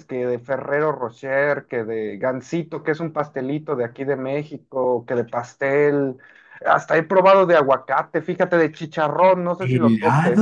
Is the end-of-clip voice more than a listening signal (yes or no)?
yes